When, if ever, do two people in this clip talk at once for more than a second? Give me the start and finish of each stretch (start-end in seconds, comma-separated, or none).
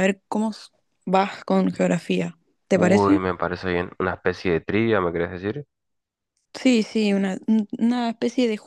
none